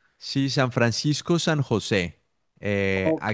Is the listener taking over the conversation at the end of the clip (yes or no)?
no